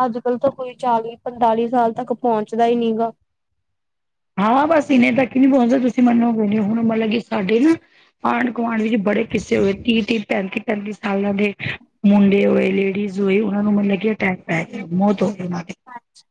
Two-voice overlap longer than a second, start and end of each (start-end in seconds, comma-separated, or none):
none